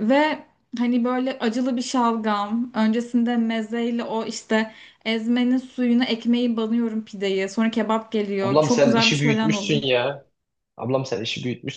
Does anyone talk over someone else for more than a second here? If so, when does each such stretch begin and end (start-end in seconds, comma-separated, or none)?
8.4-9.8